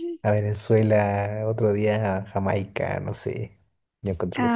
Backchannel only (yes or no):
no